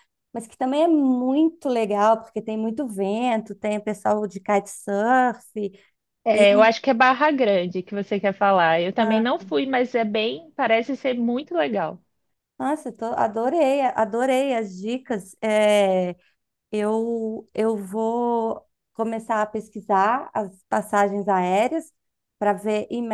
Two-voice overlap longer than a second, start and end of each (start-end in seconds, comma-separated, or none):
none